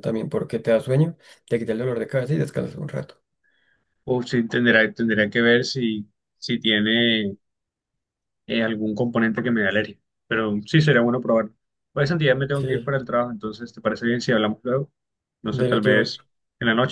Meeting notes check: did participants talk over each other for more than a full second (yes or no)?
no